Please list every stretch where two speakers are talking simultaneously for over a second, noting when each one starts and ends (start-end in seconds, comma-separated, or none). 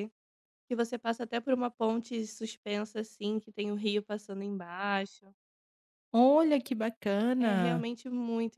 none